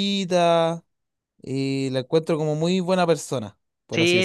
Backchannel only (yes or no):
no